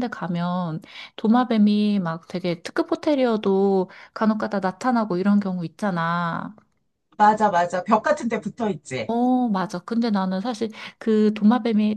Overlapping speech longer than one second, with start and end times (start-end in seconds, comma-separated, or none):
none